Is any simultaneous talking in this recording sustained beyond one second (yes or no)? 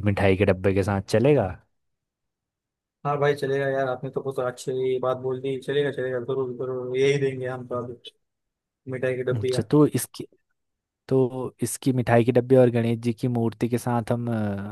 no